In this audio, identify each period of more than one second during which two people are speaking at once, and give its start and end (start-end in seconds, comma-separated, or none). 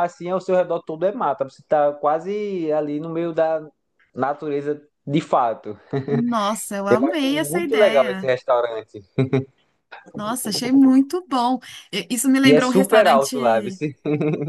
6.9-8.3, 12.4-13.7